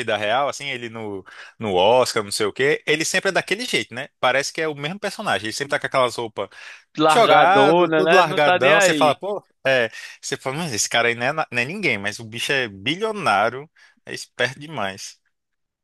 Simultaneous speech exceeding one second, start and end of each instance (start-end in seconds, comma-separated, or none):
7.1-9.2